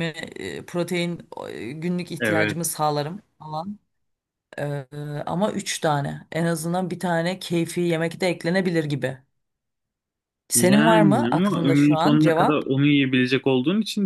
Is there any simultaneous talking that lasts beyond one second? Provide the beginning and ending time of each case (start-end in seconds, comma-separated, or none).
10.6-12.7